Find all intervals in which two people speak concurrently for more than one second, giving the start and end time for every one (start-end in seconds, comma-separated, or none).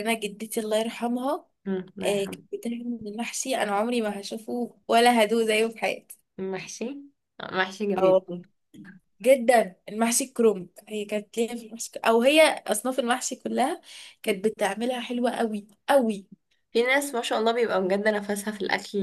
none